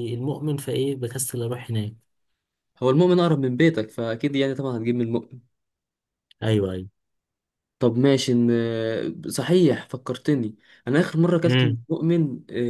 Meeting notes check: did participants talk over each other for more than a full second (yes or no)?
no